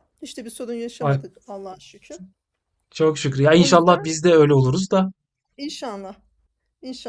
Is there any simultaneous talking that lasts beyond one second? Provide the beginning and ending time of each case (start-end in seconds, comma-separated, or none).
none